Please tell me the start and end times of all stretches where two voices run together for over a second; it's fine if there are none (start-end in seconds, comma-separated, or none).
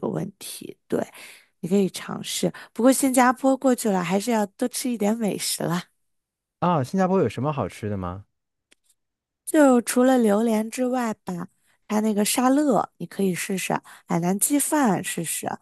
none